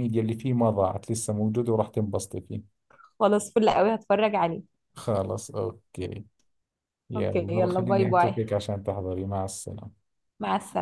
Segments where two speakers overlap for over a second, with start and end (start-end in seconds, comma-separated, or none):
7.2-8.3